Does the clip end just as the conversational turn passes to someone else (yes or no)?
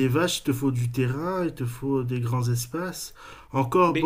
no